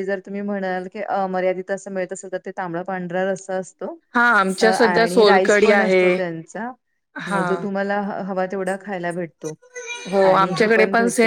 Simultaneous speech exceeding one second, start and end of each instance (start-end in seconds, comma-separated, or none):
4.6-6.0